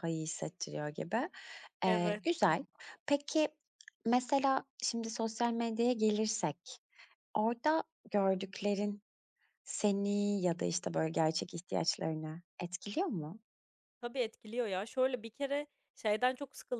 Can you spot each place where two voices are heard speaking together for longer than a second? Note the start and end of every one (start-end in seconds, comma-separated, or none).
none